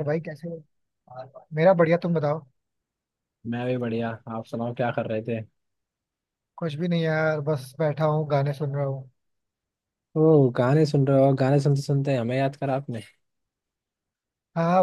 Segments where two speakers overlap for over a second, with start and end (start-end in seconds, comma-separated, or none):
none